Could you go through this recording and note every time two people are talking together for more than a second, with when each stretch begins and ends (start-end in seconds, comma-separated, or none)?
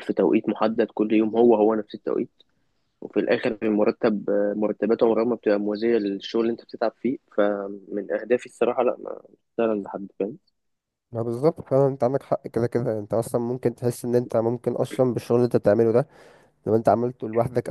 none